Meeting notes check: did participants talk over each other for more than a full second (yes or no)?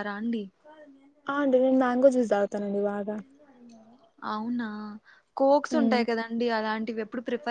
no